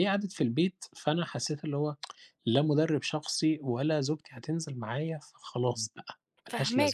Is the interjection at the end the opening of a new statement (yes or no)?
yes